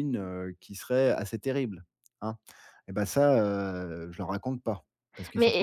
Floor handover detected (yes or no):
yes